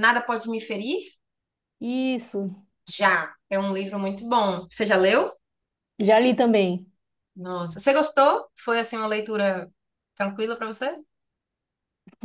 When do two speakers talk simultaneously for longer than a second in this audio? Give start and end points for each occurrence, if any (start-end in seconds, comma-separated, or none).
none